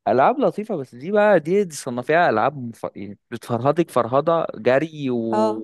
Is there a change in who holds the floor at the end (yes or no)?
no